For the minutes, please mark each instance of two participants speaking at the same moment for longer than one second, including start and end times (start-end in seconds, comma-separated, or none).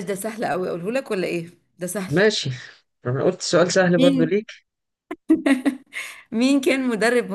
none